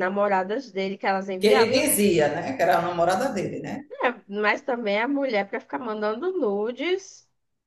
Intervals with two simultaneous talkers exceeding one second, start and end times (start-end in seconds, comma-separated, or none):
none